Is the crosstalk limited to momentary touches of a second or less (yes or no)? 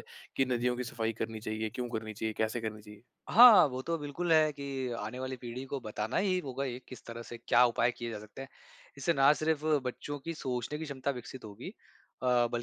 yes